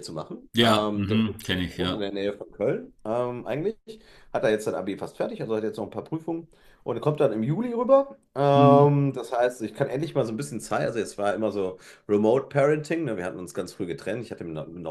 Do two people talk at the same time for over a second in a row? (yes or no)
yes